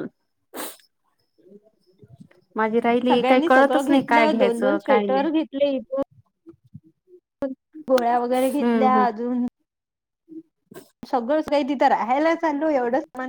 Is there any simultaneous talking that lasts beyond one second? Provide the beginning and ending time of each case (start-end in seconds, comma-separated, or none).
3.1-5.2